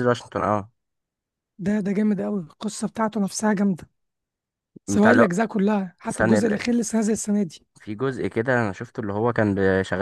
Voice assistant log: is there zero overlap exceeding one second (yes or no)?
yes